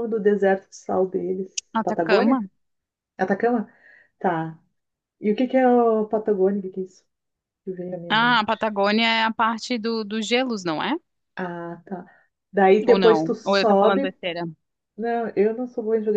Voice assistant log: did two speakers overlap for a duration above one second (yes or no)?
yes